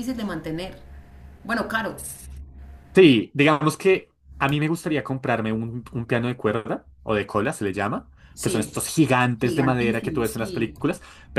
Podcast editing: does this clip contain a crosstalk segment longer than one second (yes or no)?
yes